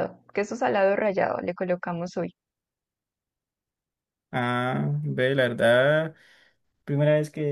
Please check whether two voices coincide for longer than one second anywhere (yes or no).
no